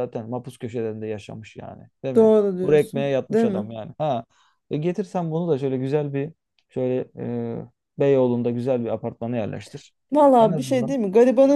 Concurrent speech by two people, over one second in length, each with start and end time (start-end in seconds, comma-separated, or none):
2.2-3.7